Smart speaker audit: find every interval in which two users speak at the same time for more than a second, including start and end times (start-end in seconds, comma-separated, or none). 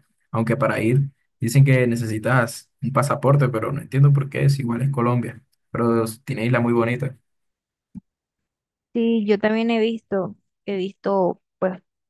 none